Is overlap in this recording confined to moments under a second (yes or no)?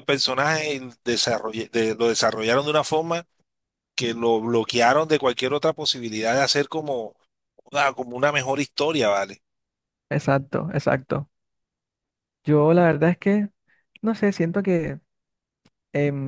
yes